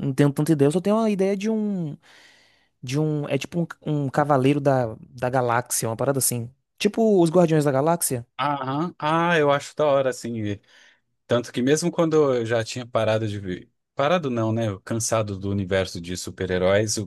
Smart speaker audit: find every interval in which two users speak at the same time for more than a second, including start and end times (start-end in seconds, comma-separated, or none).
none